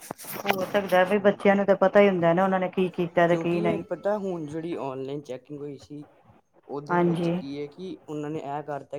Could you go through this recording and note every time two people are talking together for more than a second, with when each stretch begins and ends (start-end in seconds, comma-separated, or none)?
none